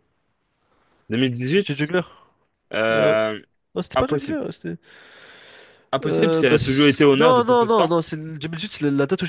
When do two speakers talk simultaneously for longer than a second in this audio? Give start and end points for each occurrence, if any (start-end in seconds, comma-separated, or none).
6.0-7.9